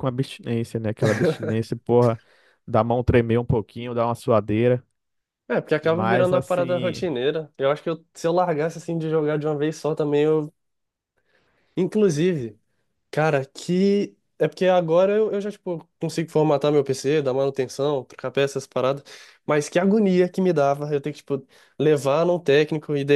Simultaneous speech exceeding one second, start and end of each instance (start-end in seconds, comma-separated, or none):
5.8-7.0